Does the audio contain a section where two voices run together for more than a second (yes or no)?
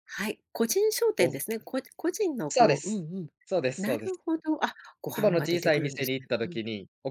yes